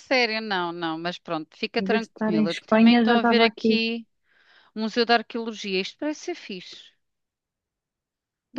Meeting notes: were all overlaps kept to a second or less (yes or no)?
no